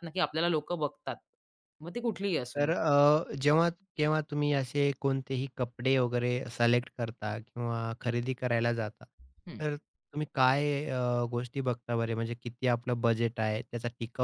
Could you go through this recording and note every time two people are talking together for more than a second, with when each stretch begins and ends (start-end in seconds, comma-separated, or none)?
none